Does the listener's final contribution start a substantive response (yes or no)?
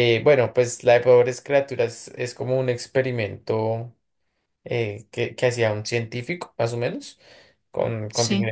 no